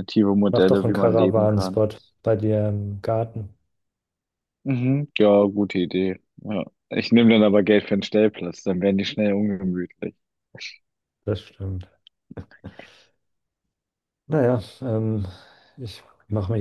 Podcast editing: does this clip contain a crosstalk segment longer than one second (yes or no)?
yes